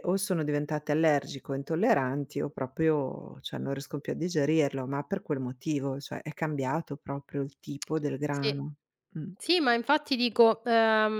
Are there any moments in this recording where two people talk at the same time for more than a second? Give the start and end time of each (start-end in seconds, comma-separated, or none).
none